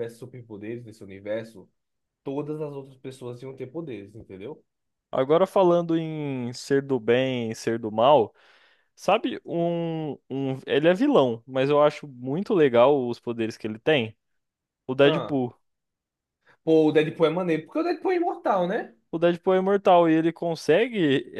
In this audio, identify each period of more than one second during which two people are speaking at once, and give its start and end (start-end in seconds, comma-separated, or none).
none